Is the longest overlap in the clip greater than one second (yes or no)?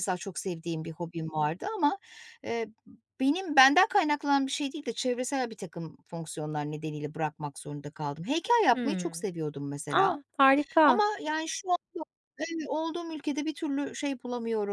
no